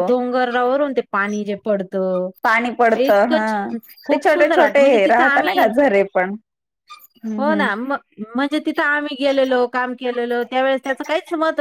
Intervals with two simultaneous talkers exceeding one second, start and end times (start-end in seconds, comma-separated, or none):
4.1-5.7